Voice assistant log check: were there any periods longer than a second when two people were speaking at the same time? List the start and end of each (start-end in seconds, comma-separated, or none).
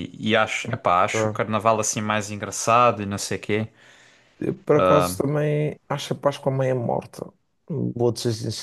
none